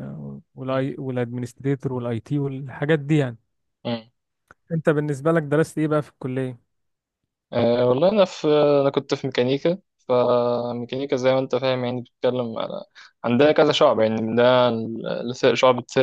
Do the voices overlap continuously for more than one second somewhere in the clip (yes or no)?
no